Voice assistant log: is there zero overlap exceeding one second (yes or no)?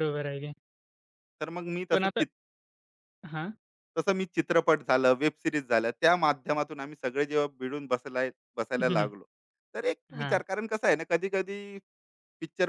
yes